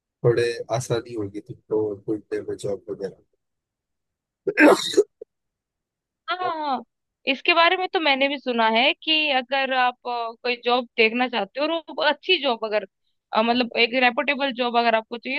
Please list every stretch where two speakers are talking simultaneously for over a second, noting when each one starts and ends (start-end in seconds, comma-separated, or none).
none